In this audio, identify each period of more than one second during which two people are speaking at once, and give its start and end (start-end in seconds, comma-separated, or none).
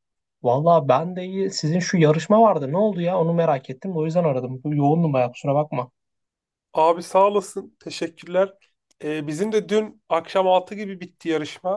none